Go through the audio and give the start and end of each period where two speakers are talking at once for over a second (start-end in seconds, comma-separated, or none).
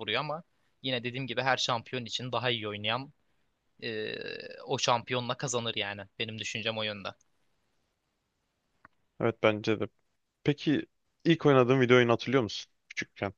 none